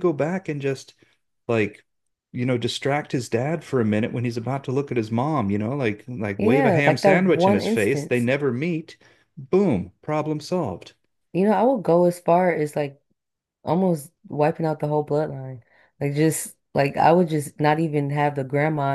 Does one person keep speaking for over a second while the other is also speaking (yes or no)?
yes